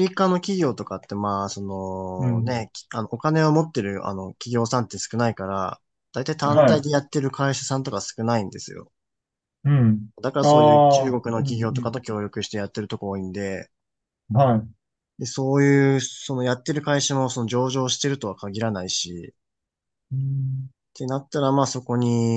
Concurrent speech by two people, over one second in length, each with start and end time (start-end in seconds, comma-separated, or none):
10.2-11.9